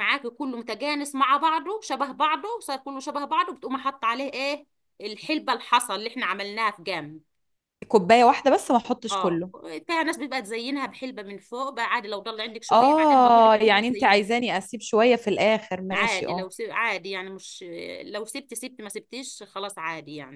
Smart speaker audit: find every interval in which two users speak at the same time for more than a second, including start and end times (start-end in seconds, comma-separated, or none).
12.7-14.3